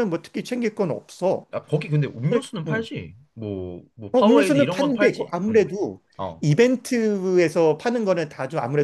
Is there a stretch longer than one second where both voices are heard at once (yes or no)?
yes